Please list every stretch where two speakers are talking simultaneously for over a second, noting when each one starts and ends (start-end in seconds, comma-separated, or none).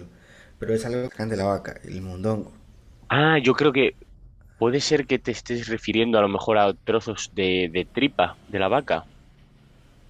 none